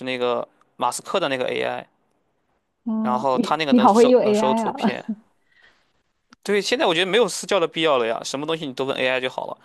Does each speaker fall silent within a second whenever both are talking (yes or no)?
no